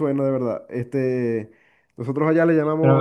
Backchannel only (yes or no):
yes